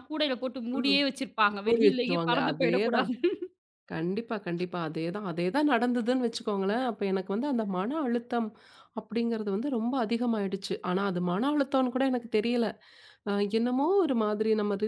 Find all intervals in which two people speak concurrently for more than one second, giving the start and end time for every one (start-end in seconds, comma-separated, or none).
1.6-3.1